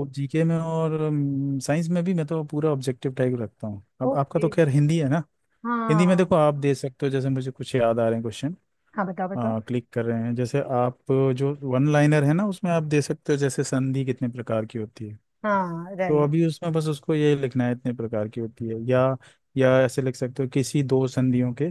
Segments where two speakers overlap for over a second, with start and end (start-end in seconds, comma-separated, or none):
none